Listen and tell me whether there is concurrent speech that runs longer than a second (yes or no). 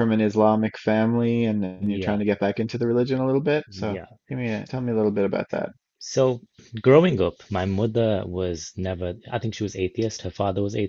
no